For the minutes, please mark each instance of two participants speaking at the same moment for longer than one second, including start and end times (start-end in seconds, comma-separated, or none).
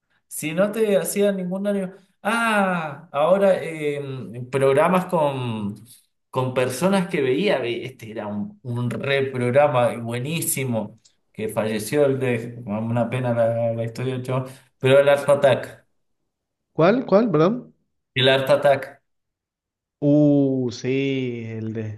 none